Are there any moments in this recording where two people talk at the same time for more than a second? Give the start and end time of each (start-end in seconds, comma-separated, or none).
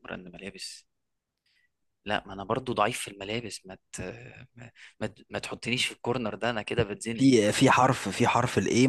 none